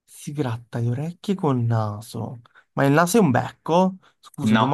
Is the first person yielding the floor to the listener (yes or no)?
no